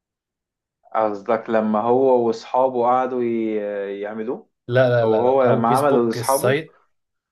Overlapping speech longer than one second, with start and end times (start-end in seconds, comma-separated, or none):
5.0-6.6